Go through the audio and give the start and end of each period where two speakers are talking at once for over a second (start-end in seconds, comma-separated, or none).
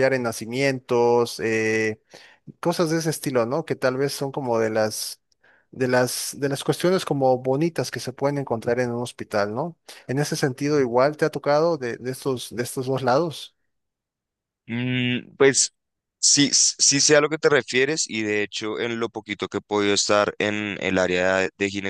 none